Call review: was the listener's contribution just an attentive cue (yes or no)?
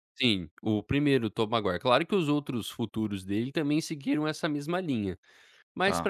no